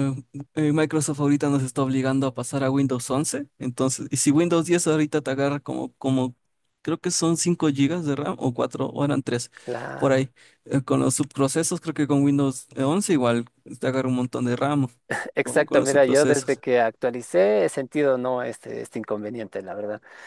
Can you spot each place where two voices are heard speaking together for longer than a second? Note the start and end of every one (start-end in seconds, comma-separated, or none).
15.4-16.6